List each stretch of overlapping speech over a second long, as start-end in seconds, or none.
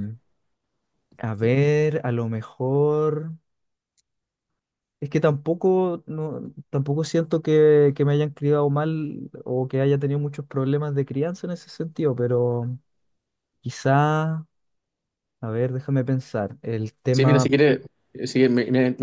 none